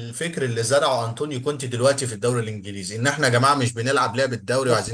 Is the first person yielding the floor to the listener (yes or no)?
yes